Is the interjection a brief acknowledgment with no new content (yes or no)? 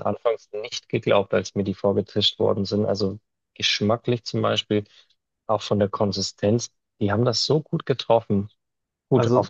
yes